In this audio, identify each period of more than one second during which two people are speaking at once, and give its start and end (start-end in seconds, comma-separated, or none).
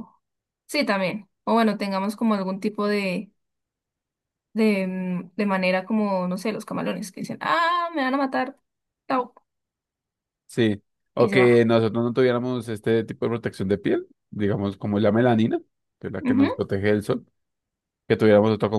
none